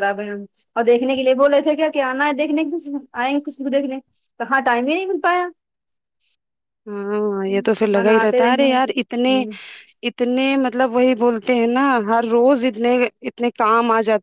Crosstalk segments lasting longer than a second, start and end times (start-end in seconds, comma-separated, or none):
8.0-9.3